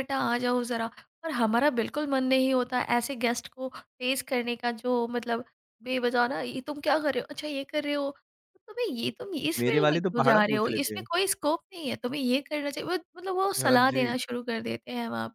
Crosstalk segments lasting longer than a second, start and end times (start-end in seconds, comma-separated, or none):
9.6-11.1